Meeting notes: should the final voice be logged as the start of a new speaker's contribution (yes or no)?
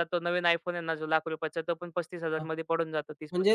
yes